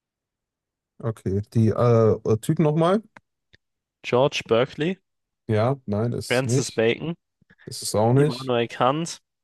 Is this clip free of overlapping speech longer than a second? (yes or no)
yes